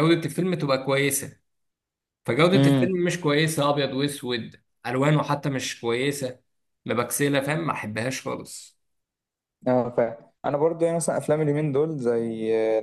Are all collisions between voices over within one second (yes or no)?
yes